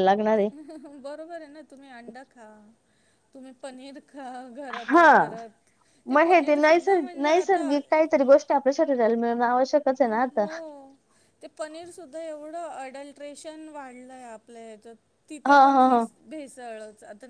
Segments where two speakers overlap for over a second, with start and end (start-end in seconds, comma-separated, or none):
none